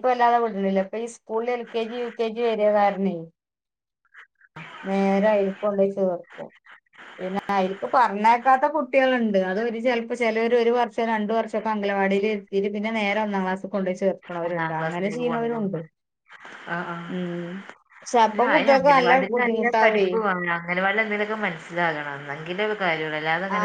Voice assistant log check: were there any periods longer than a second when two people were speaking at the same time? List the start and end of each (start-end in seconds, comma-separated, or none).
14.5-15.8, 18.5-20.1